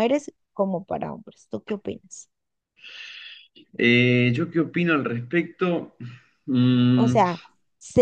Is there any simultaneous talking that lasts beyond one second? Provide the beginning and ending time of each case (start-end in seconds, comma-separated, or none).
none